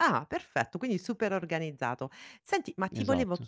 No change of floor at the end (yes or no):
yes